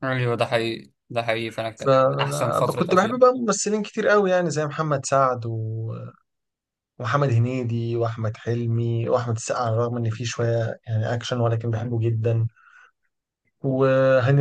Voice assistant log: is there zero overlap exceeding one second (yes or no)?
no